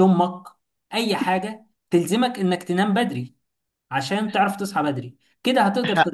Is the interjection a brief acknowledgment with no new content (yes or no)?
yes